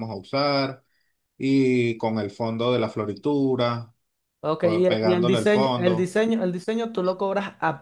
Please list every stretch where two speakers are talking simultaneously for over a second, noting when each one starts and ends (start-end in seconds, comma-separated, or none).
4.6-6.1